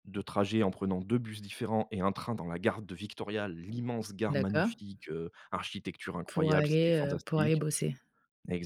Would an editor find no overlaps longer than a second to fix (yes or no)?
no